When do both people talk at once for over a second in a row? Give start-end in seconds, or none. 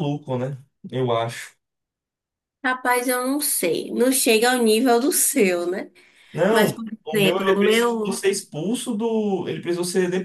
6.5-8.2